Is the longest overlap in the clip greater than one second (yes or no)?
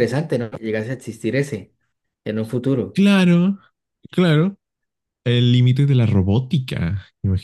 no